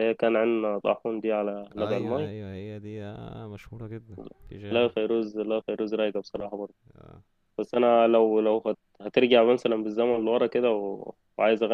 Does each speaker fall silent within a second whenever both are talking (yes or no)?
yes